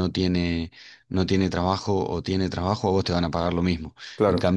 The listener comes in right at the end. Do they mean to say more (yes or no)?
no